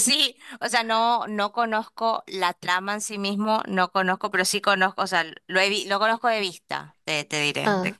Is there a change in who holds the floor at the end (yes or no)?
yes